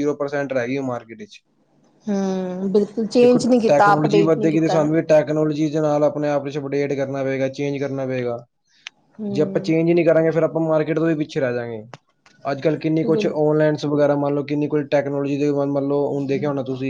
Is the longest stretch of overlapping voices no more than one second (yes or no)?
no